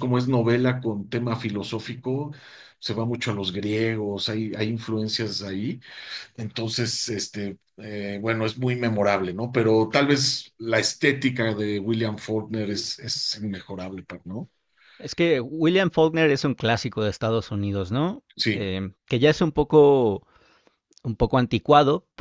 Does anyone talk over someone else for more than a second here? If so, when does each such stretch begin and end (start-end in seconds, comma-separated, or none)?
none